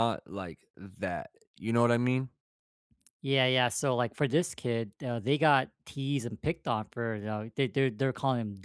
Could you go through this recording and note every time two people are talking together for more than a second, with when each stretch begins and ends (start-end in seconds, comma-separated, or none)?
none